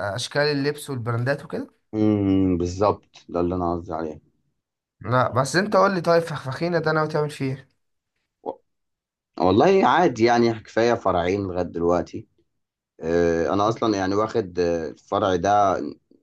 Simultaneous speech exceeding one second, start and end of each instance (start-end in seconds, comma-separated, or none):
none